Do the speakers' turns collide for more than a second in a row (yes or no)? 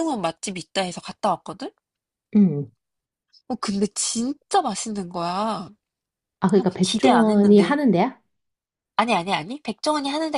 yes